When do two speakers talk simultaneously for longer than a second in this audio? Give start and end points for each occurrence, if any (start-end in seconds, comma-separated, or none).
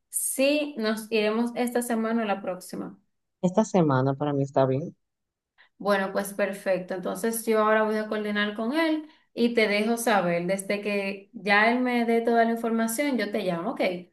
none